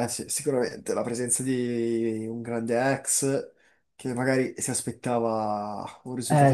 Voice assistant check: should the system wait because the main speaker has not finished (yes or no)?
no